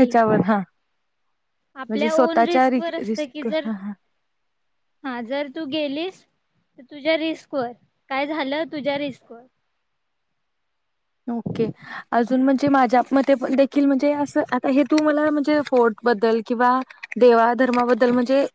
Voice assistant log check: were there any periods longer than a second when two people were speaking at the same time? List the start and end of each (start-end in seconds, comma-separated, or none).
1.9-3.7